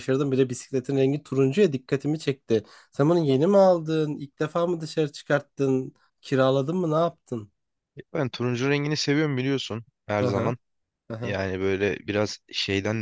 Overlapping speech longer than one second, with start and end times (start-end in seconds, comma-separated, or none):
none